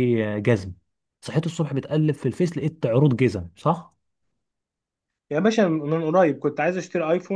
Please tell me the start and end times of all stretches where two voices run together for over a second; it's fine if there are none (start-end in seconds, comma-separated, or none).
none